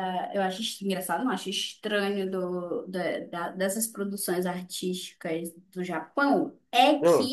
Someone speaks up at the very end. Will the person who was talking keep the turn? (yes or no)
yes